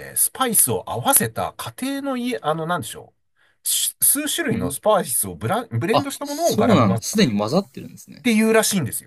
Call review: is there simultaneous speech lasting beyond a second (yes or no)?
yes